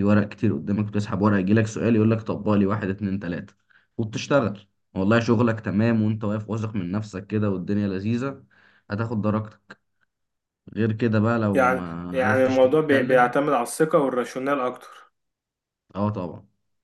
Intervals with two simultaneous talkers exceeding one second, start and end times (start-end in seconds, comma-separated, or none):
11.5-13.3